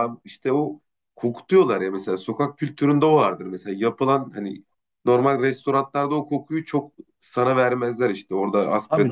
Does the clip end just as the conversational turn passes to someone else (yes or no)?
no